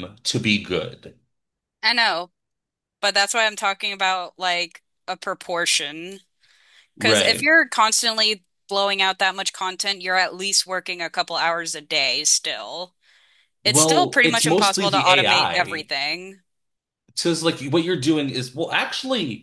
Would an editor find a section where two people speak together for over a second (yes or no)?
yes